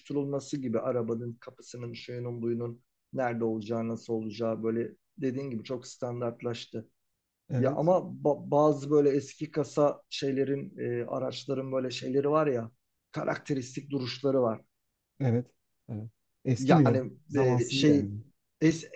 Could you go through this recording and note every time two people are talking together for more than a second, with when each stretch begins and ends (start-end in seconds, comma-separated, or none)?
16.6-18.1